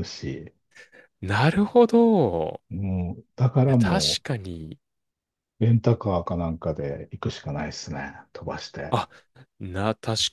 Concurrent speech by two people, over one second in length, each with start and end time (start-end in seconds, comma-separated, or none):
none